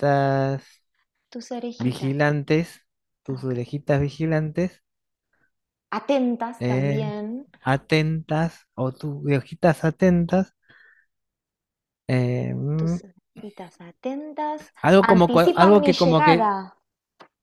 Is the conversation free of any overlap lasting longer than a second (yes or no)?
no